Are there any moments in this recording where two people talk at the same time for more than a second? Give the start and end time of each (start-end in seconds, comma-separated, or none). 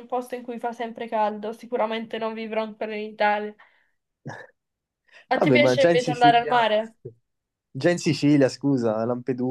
5.3-6.7